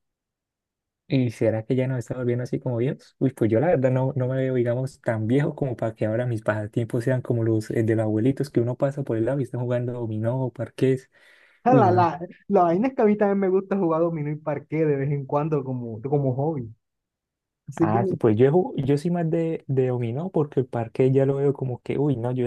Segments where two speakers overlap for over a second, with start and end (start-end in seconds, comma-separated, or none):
none